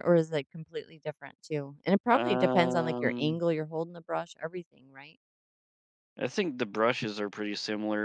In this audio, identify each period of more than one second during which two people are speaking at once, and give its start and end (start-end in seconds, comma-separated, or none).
2.1-3.4